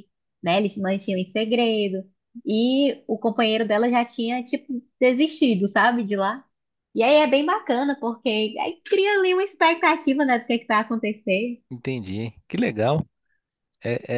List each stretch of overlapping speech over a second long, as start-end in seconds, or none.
none